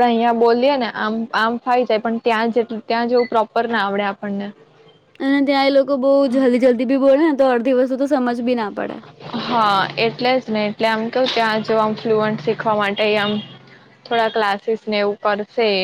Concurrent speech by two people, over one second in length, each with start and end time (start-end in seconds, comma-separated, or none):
none